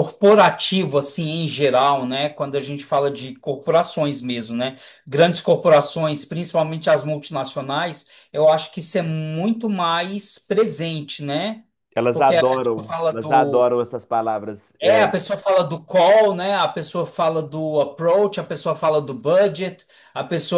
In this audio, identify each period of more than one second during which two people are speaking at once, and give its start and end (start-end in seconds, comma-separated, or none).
12.1-13.6